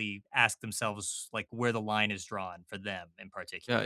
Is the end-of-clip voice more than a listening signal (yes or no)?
yes